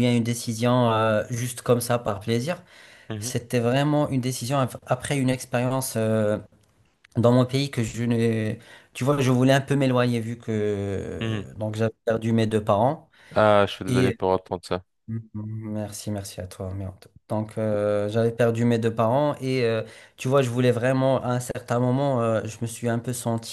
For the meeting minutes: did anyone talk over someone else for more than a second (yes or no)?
no